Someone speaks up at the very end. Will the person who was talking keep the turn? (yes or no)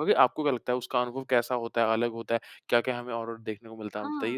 no